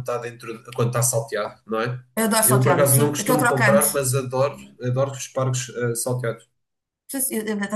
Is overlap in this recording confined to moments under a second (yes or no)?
no